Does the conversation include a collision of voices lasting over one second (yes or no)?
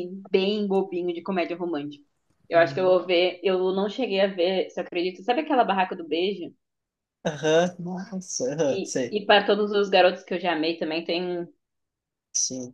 no